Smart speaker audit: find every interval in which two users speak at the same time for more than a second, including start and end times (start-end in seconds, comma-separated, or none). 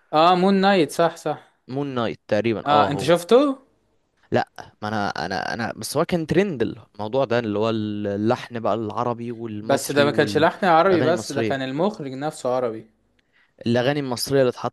9.6-11.6